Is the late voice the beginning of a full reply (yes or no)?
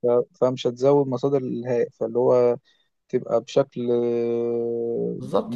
yes